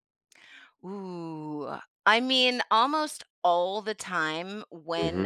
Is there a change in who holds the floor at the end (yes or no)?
no